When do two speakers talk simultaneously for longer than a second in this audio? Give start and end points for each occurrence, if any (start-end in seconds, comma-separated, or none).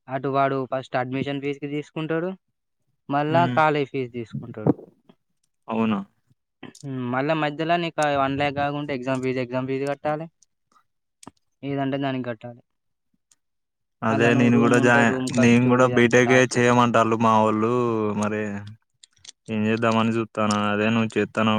14.1-16.5